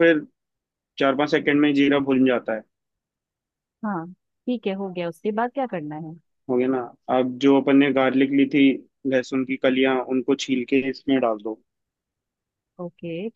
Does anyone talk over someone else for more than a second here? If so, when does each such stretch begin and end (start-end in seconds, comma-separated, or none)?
none